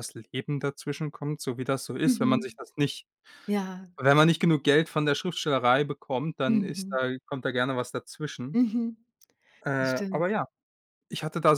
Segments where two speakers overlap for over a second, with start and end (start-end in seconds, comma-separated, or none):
none